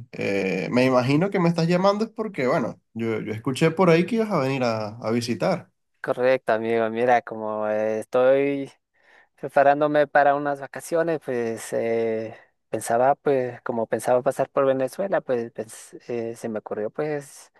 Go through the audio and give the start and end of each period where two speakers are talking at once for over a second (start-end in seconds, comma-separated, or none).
none